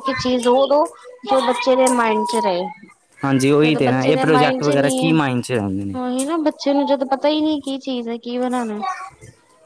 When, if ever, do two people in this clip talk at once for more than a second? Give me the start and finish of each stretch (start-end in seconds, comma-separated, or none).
3.6-5.1